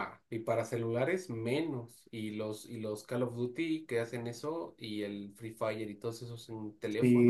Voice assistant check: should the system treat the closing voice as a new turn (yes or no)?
yes